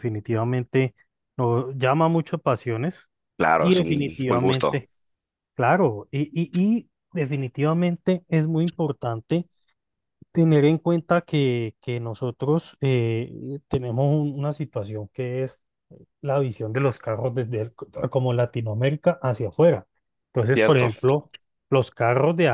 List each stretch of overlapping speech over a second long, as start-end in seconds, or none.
3.5-4.8